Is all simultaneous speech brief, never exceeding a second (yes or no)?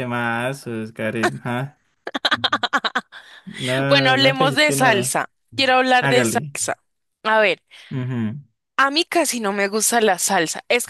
no